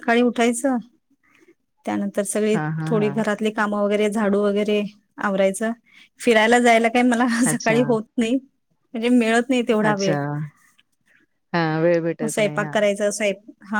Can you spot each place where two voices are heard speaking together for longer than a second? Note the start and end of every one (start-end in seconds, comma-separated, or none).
none